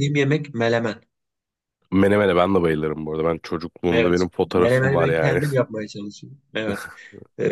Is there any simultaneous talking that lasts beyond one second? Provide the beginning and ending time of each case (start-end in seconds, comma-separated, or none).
3.9-5.4